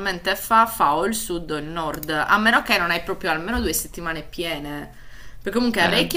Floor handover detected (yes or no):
no